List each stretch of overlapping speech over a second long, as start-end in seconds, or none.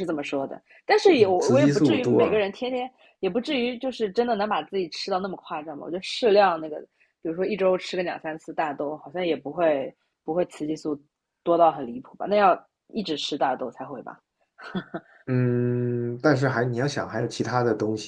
1.2-2.4